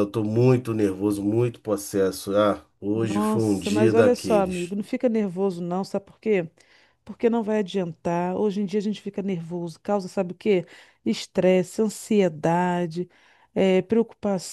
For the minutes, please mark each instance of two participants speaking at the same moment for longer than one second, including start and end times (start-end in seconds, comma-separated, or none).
3.0-4.7